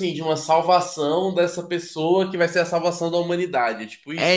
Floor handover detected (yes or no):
yes